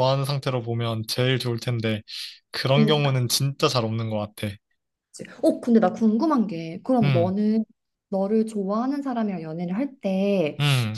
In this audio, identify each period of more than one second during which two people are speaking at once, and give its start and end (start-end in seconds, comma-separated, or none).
none